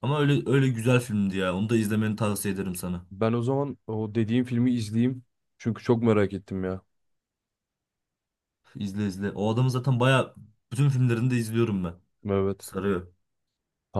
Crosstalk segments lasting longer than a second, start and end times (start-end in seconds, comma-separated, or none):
none